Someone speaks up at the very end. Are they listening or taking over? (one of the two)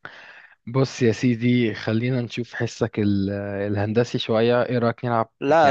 taking over